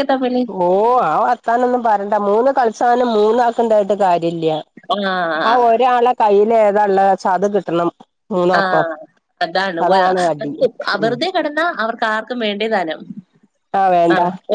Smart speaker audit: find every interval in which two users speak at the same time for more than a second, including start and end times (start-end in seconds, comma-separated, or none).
none